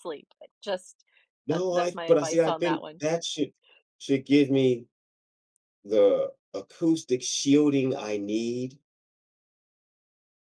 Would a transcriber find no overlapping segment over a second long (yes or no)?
no